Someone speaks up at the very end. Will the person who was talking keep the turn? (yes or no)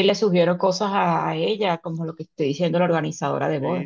no